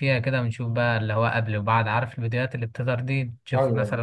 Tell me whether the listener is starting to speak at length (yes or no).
no